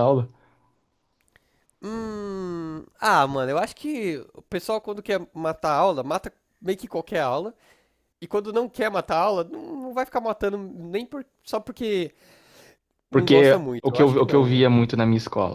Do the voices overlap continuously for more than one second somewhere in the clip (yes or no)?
yes